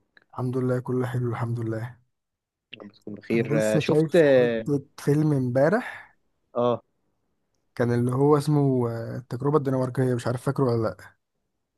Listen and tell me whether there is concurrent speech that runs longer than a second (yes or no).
yes